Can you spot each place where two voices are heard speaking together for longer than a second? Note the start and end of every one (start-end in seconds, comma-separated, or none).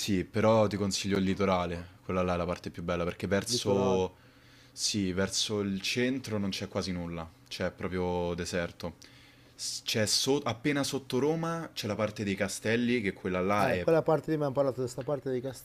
none